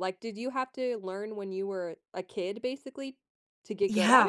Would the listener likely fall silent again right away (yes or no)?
no